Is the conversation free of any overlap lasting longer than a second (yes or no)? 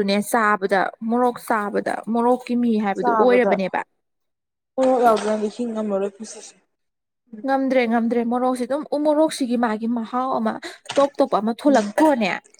yes